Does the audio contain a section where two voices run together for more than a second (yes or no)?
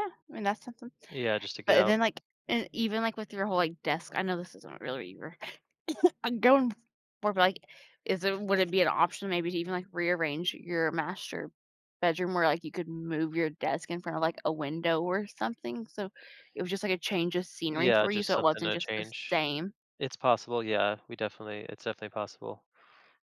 yes